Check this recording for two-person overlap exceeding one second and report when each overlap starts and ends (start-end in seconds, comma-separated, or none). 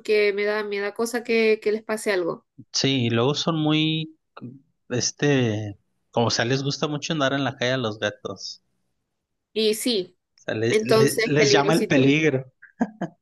10.7-12.1